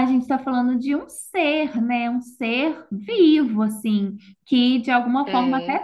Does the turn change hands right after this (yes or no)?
no